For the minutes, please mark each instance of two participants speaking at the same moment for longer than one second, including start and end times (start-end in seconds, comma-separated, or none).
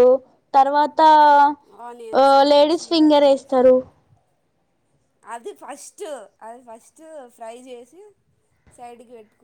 1.9-3.6